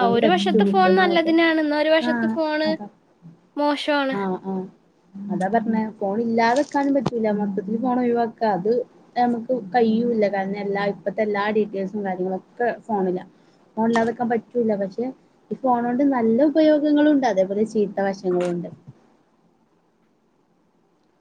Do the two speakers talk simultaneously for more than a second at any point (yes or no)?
no